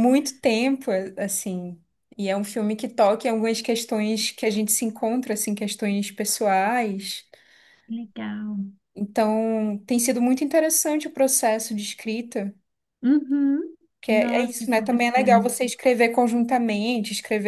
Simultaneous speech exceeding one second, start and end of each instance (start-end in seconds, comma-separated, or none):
14.0-15.5